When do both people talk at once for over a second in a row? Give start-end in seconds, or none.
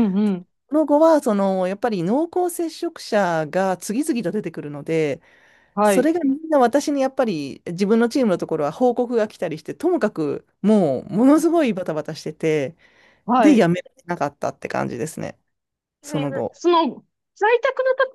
none